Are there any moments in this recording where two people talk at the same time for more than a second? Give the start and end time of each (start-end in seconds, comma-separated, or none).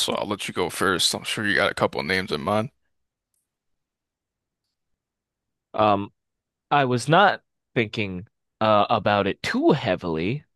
none